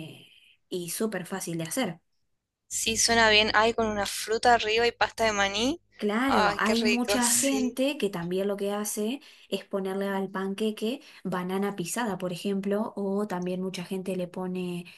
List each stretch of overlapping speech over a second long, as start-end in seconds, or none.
6.3-7.8